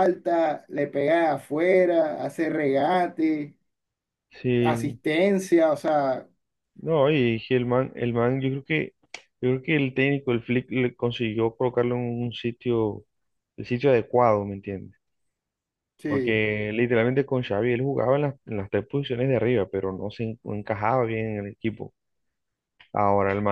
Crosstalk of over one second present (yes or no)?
no